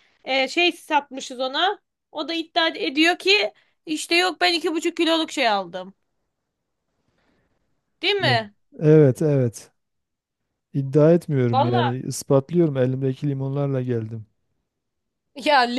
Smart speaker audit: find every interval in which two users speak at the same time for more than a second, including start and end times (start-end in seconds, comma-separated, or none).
none